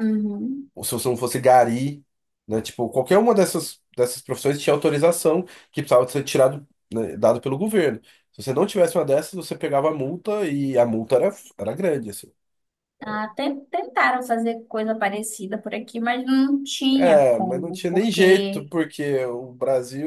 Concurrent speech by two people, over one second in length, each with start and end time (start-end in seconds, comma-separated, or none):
17.0-18.7